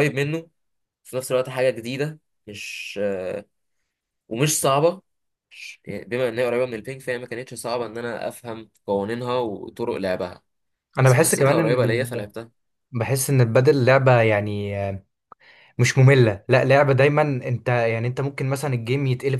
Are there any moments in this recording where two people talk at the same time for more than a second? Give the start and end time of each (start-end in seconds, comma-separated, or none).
11.0-12.3